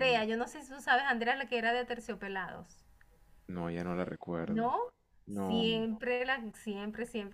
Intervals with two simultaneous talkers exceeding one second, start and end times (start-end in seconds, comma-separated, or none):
none